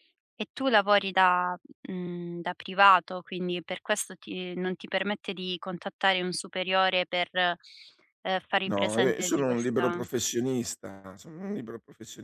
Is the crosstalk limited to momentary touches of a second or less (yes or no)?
no